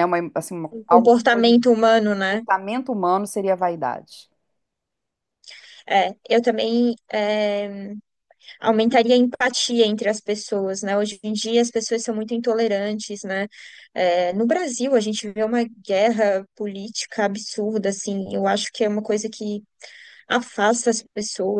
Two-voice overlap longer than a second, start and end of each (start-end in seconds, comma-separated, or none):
0.7-2.4